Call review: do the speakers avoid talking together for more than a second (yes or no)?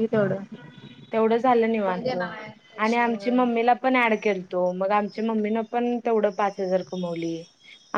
no